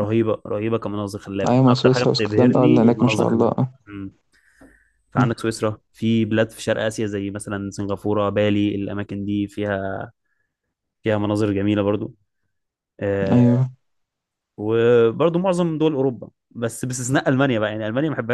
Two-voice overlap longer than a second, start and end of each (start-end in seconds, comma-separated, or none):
1.5-3.7